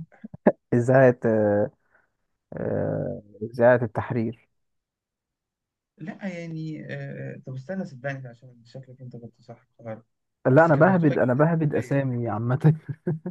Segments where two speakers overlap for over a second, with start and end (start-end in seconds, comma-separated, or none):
10.5-12.0